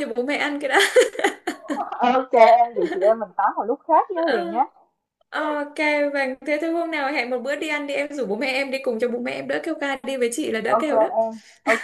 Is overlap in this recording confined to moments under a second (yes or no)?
yes